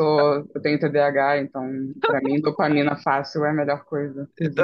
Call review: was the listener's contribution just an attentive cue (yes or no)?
no